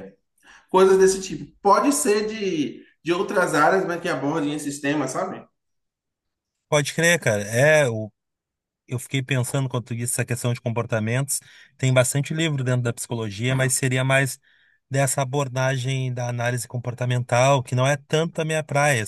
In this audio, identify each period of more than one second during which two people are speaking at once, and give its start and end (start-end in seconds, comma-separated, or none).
none